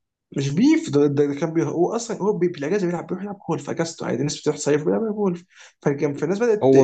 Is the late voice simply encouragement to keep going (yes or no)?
no